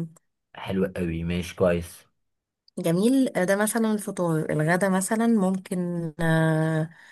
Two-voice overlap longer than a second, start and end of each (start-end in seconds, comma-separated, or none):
none